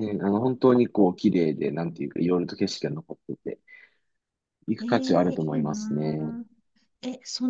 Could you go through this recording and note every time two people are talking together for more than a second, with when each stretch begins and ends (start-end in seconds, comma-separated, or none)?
4.8-6.3